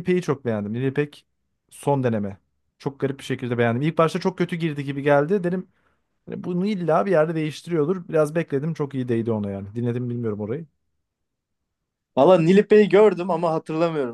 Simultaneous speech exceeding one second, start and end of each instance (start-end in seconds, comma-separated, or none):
none